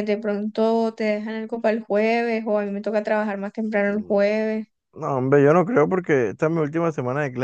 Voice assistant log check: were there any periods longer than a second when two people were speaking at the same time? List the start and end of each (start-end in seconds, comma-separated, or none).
none